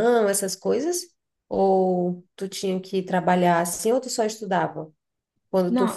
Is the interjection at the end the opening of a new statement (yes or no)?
yes